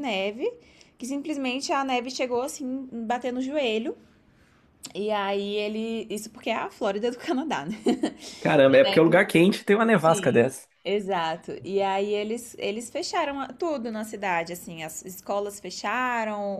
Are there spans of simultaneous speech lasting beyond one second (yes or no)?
no